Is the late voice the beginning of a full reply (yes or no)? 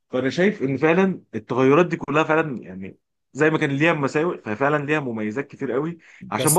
no